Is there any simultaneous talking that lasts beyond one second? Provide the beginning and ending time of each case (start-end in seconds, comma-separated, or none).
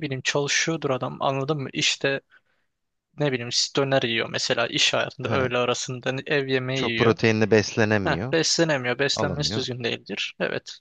none